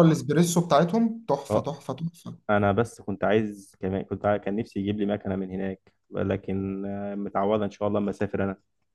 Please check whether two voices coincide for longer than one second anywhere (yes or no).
no